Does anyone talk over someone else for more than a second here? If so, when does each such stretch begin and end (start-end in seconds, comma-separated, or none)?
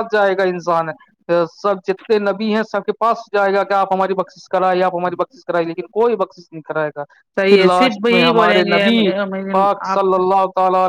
7.5-8.9